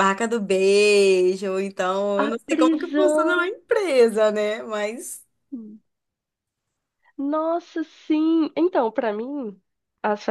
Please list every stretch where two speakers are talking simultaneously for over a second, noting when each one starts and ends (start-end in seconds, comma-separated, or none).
2.2-3.5